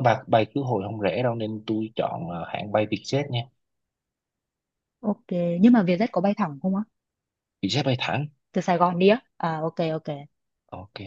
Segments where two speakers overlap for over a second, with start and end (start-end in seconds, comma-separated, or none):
none